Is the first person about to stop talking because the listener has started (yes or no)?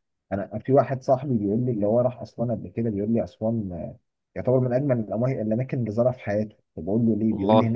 no